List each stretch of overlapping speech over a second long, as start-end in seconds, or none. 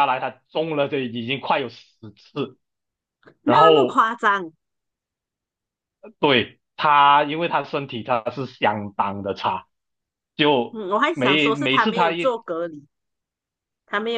10.7-12.3